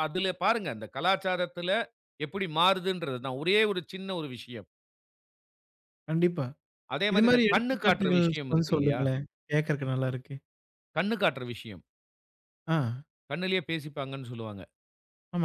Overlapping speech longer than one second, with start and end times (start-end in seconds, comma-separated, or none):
7.1-9.0